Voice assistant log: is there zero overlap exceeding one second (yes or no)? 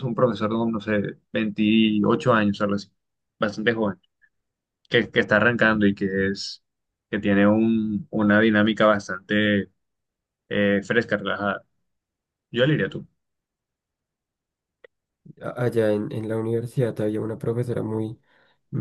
yes